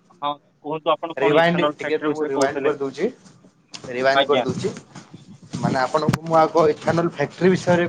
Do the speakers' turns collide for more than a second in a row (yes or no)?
yes